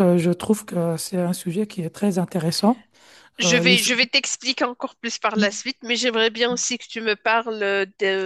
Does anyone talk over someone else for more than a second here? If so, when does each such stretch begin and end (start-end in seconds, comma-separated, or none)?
none